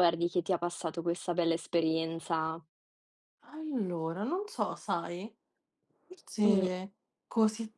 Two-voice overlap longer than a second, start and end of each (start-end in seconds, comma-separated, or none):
none